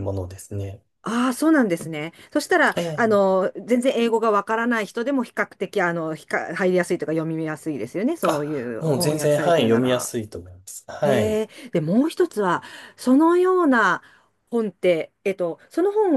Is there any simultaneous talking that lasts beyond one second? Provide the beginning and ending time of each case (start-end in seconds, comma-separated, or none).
8.3-10.1